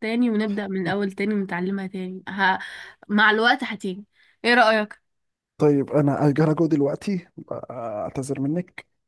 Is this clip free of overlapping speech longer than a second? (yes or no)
yes